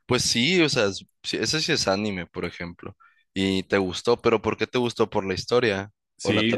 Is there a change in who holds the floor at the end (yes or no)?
yes